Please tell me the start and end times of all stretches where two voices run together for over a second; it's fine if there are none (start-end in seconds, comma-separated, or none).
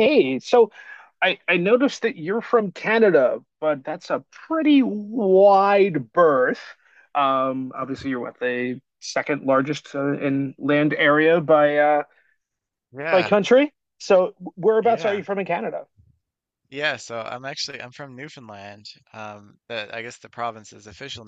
none